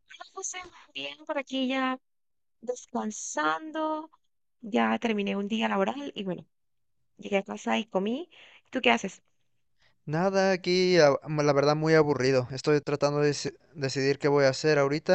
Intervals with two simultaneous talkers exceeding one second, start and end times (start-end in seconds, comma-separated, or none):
none